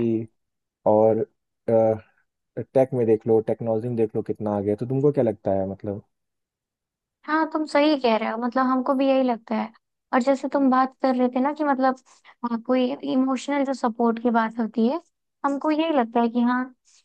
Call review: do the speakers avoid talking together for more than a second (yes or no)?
yes